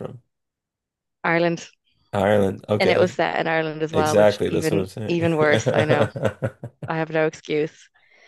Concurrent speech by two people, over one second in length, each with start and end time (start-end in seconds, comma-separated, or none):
3.9-5.3